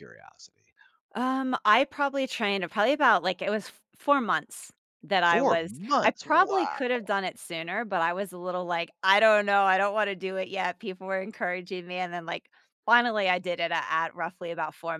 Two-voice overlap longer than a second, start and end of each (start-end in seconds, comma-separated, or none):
5.2-6.8